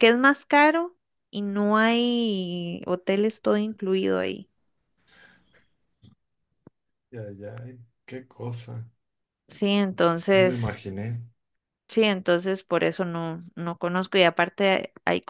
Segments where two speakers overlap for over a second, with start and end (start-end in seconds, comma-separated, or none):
none